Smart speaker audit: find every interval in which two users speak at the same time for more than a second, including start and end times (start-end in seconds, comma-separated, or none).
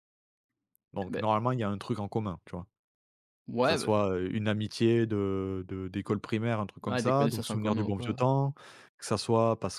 6.9-8.2